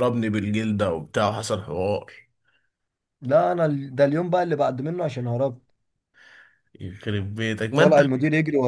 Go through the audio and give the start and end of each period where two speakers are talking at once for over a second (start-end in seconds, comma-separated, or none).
none